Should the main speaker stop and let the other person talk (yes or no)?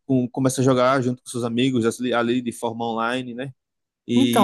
yes